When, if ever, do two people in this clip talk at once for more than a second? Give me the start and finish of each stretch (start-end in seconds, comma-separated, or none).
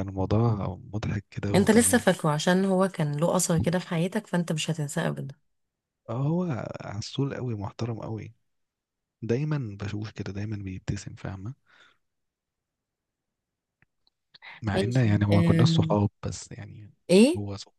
14.7-16.0